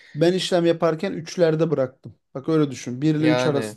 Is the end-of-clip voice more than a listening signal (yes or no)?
no